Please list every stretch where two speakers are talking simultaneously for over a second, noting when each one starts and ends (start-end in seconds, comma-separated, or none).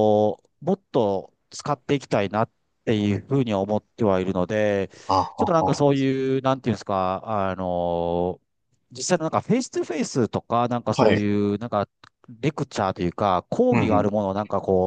none